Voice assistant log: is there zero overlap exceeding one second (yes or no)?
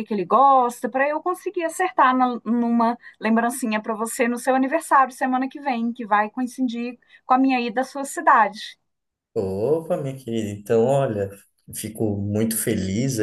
yes